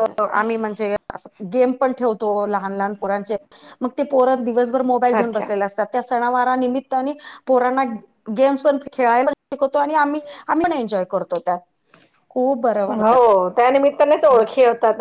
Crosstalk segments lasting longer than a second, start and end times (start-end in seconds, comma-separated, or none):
none